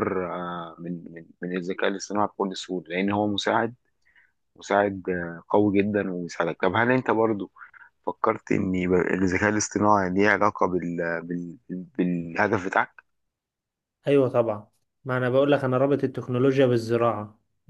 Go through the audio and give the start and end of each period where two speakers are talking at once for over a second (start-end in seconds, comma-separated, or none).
none